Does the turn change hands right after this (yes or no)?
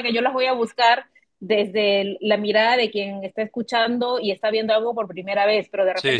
no